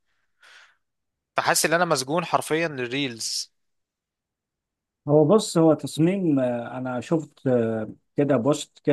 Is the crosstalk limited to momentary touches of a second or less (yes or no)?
yes